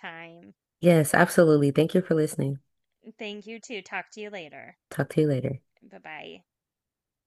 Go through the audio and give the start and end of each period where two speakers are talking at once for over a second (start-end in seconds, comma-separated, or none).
none